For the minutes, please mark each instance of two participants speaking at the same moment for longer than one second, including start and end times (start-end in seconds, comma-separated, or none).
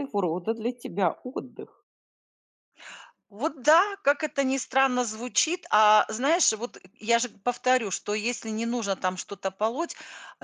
none